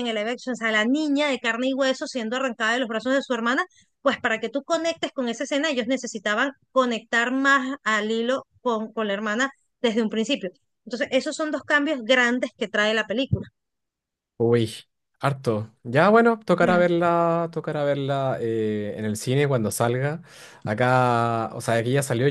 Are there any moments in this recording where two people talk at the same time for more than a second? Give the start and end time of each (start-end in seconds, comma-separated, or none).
none